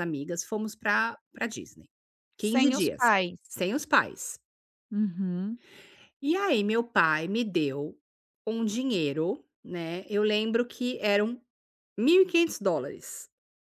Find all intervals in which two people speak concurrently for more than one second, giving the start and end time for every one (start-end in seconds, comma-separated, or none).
none